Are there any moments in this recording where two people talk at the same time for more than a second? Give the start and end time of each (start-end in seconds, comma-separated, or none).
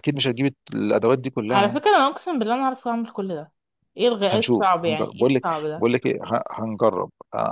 4.3-5.9